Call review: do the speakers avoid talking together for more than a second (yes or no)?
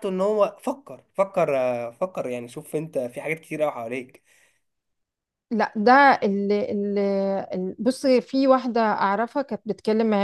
yes